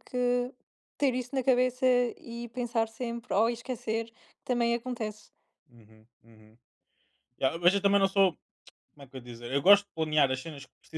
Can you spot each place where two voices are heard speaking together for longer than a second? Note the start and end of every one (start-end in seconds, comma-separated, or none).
none